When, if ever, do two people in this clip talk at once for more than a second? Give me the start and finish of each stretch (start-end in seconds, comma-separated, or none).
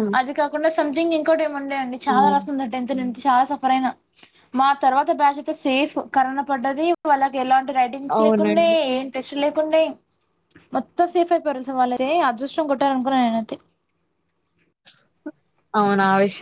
none